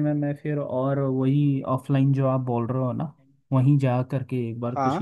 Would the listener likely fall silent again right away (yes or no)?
yes